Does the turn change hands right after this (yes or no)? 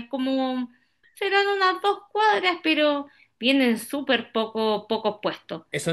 yes